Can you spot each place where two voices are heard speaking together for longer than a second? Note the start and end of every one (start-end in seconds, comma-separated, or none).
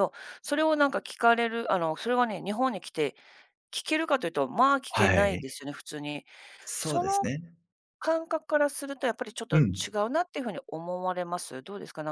none